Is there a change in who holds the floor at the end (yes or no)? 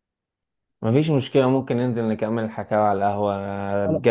no